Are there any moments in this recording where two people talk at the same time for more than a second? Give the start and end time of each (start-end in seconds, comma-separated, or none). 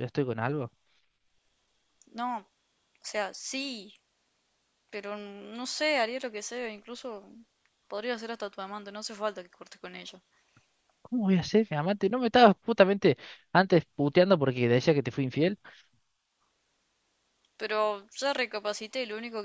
none